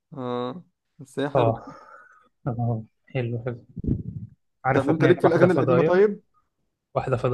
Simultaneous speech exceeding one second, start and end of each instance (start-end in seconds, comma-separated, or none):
4.7-6.0